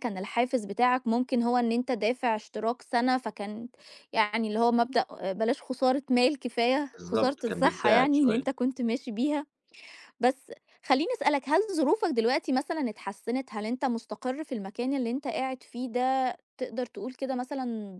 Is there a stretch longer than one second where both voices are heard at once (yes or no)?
yes